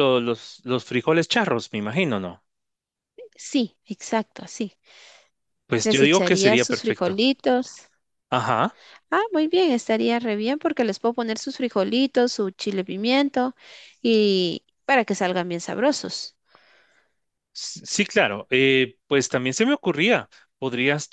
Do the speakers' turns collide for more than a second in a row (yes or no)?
yes